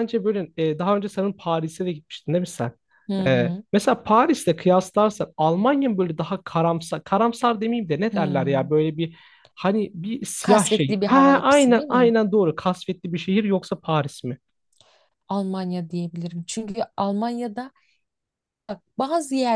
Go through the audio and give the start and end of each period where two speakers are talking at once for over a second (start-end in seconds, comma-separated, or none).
10.4-12.1